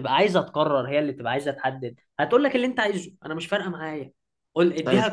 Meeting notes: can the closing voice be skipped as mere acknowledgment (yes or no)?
yes